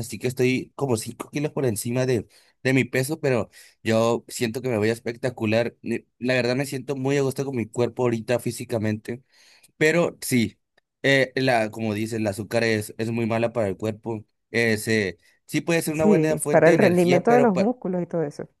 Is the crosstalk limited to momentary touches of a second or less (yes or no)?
no